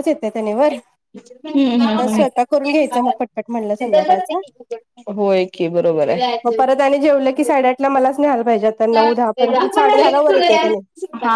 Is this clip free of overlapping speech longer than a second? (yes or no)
no